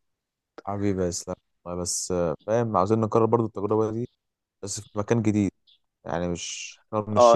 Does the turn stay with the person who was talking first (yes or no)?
no